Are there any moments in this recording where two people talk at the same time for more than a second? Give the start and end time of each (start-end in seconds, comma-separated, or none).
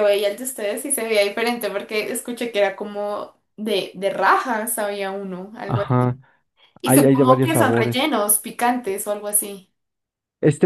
6.8-8.1